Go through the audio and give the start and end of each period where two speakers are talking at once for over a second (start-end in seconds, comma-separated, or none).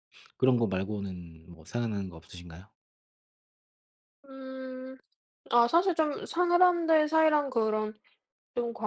none